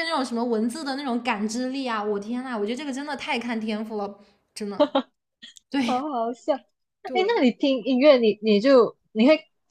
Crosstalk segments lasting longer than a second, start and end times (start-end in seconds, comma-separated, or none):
none